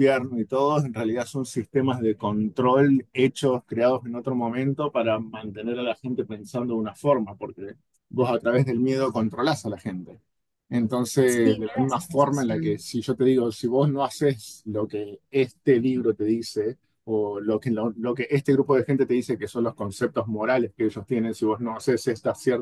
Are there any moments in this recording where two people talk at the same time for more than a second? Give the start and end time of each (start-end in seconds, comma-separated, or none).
11.2-12.8